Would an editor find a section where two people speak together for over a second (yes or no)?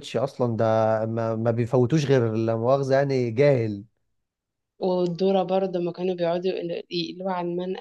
no